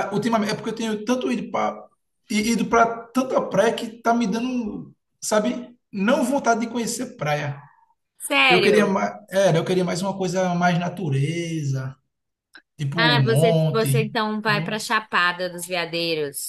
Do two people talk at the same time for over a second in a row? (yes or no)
yes